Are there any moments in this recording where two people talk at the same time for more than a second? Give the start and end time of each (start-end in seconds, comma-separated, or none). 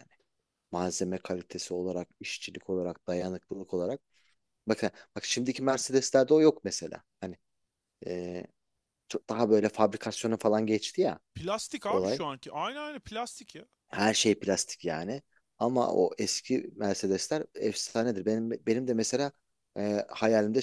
none